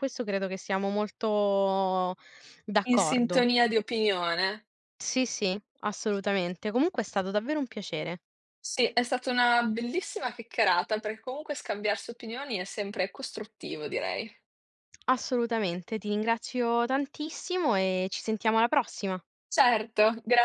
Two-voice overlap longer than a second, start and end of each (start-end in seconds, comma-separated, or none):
none